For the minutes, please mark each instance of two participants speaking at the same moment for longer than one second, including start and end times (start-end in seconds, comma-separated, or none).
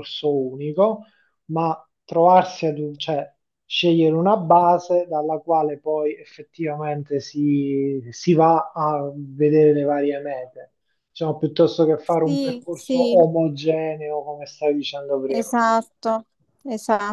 12.0-13.2